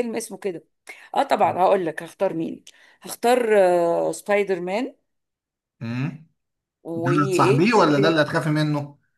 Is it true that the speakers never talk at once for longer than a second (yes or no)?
no